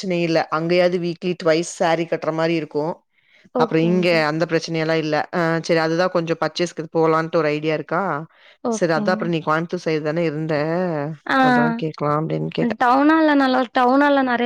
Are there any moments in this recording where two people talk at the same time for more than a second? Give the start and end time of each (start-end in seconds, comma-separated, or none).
none